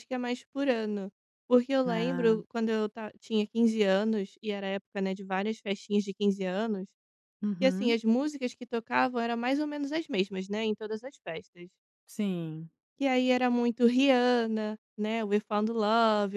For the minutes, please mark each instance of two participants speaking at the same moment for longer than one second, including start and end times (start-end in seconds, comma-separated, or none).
none